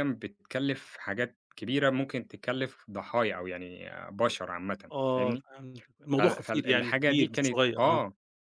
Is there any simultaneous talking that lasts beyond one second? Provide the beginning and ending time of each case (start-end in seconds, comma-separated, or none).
6.2-8.0